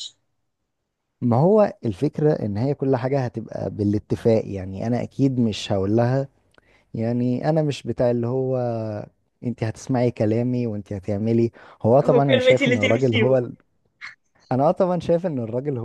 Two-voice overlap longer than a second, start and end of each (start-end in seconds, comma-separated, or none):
12.0-13.5